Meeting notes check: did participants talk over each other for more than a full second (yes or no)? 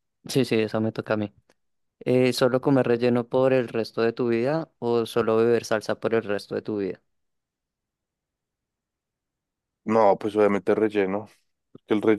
no